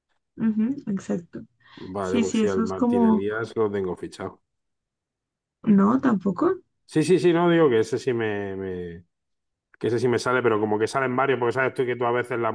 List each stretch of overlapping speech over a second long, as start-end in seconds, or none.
2.0-3.3